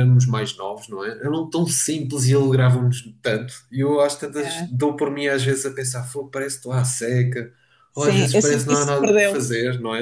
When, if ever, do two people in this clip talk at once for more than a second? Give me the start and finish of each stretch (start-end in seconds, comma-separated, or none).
7.9-9.4